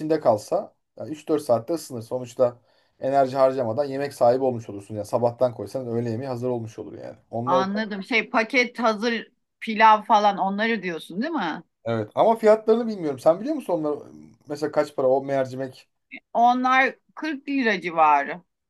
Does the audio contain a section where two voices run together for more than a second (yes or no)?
no